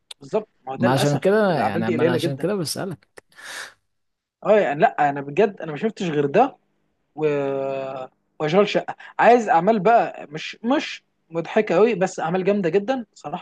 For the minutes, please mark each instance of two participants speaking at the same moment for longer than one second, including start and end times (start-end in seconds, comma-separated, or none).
0.8-2.5